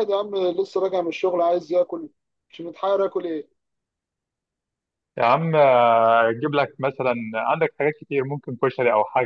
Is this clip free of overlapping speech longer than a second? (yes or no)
yes